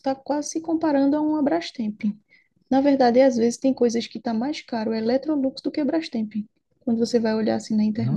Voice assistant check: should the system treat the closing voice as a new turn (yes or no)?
yes